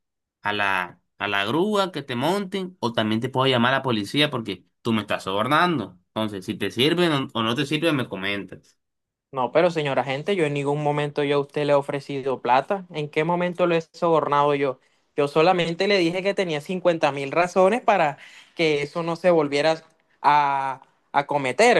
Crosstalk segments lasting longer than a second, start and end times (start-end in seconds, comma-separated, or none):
none